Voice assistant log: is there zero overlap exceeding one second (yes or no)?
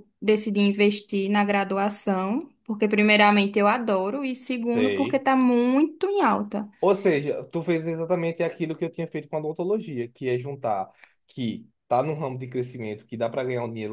yes